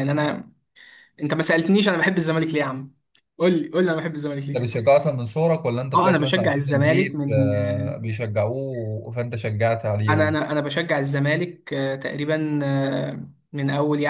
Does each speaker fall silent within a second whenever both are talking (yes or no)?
no